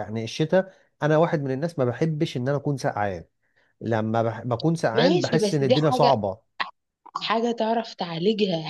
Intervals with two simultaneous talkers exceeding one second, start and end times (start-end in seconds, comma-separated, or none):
5.0-6.2